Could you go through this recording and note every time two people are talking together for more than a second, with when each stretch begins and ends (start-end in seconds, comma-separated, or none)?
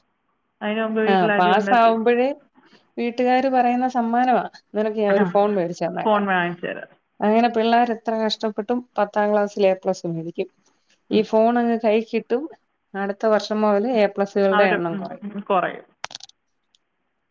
none